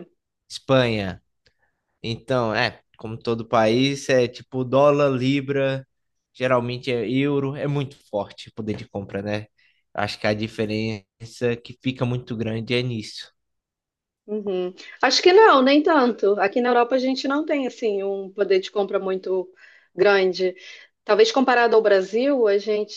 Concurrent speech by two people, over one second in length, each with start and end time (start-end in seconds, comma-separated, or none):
none